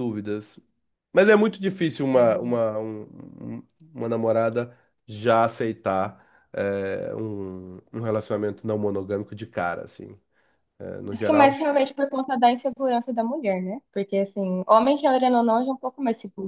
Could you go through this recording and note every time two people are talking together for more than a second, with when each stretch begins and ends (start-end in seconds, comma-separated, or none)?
none